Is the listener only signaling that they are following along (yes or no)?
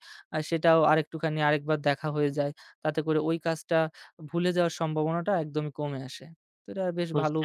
no